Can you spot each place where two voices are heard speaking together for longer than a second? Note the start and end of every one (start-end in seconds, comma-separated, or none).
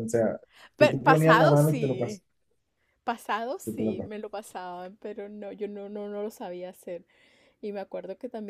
0.8-2.2